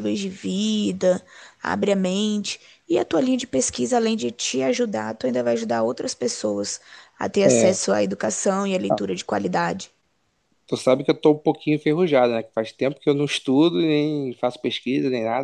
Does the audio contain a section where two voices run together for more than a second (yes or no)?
no